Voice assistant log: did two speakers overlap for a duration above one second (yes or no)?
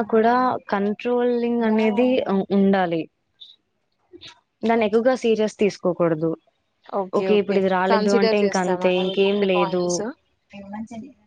yes